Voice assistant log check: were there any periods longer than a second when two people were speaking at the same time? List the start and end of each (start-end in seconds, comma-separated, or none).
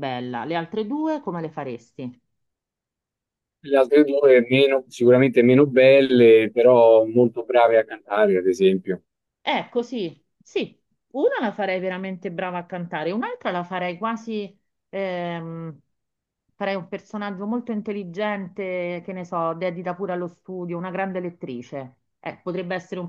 none